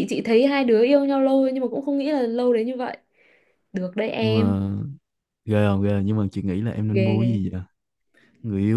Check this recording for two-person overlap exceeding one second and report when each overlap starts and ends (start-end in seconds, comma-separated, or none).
none